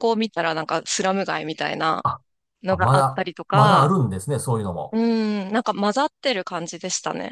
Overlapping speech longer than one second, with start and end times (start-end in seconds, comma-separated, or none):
2.7-4.0